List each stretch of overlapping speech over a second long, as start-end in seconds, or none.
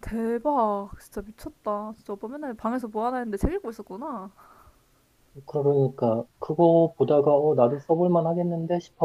none